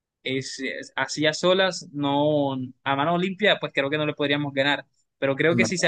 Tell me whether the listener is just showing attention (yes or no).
yes